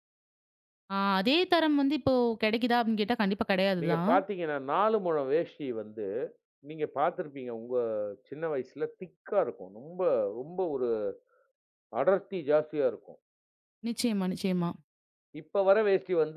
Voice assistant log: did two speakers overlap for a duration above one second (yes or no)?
no